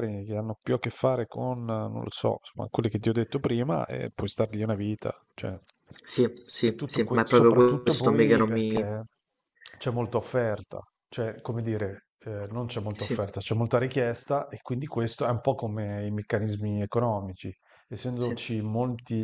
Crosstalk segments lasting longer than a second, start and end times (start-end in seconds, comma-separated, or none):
6.6-8.8